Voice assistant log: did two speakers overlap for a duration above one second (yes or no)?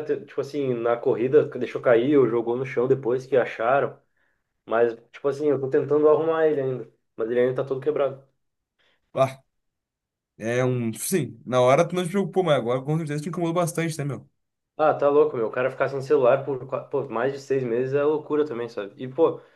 no